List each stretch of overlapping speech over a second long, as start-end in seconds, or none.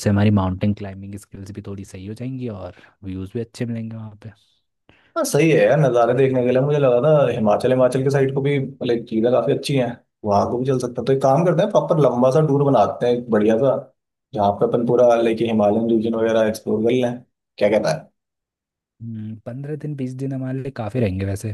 none